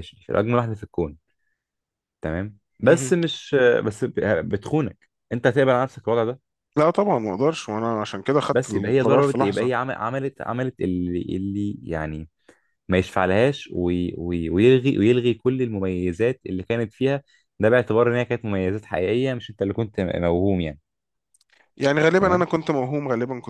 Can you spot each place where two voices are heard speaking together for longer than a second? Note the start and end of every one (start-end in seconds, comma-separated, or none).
8.5-9.7